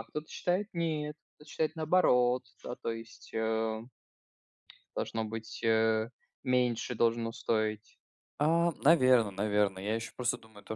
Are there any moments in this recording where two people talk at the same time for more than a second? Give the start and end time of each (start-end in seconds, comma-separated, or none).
none